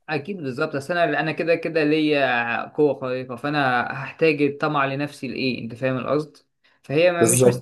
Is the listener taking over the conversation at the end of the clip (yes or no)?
no